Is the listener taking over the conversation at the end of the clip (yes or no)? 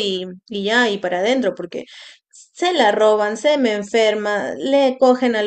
no